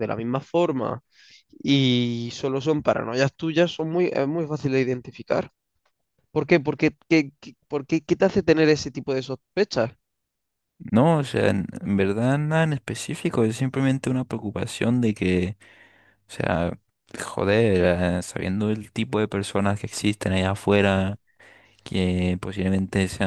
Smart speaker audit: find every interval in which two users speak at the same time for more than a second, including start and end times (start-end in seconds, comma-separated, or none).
none